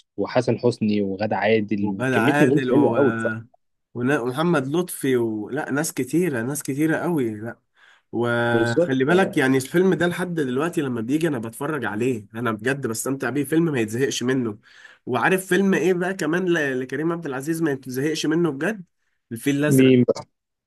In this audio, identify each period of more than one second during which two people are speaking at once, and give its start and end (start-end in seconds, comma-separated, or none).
1.8-3.5